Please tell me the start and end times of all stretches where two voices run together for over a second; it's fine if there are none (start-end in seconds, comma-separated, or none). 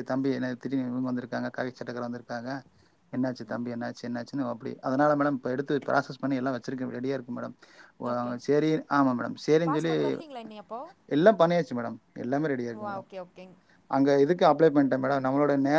none